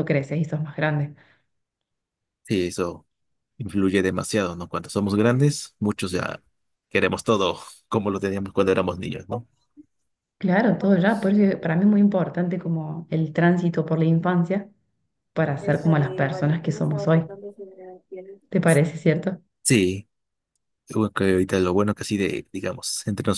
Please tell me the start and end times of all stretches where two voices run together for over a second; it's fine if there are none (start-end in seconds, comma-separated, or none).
15.6-17.3